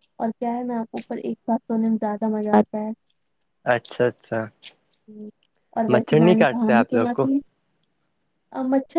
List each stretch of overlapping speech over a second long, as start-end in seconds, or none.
5.9-7.3